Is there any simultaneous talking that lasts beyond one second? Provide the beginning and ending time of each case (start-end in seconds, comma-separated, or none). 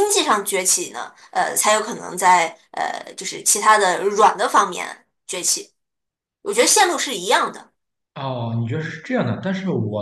none